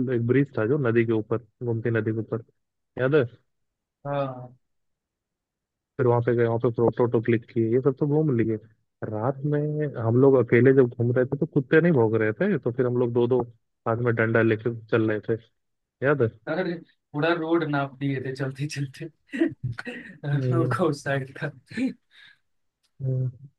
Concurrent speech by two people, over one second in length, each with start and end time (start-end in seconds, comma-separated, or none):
none